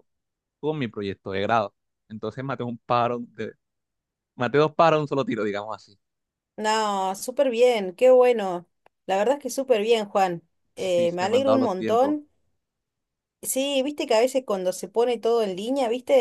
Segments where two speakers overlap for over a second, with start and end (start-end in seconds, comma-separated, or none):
10.8-12.2